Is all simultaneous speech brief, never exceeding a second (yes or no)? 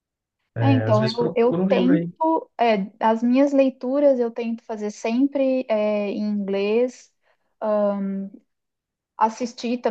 no